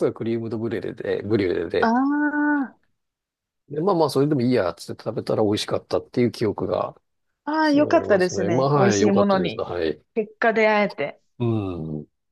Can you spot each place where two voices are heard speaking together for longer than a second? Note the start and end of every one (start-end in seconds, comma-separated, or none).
7.6-9.6